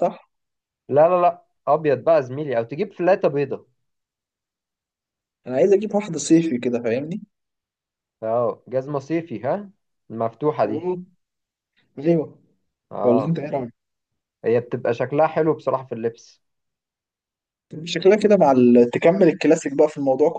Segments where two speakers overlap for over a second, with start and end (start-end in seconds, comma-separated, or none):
none